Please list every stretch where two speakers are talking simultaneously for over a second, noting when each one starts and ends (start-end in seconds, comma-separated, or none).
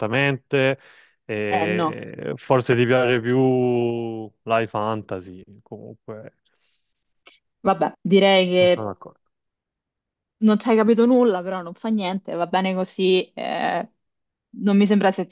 none